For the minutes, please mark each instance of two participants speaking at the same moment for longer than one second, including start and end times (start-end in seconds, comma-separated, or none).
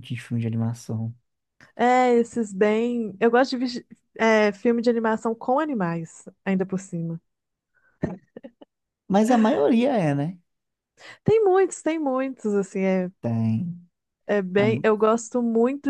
none